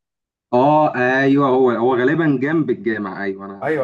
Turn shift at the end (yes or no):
yes